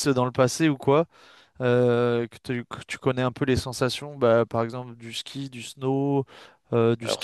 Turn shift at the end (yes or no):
yes